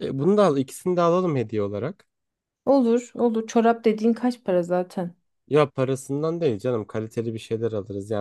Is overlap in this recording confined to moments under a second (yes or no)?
yes